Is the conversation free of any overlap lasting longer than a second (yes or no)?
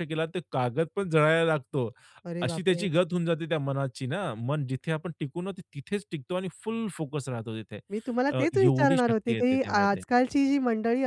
no